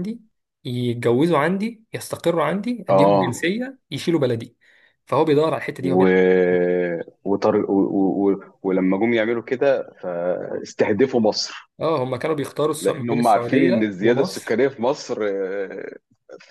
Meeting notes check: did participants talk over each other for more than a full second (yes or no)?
yes